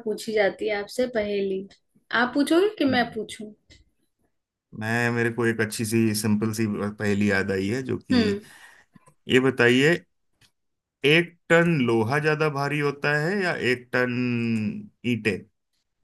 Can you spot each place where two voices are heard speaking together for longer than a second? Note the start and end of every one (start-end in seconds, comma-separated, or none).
none